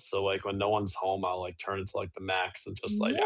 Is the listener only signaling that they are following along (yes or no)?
no